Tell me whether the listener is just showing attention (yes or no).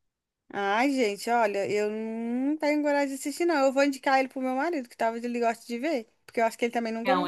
no